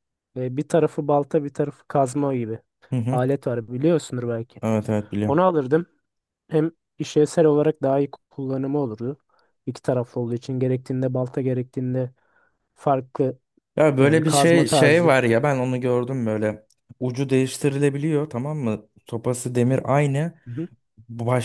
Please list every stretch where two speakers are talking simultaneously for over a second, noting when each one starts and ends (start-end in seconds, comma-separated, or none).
14.0-15.2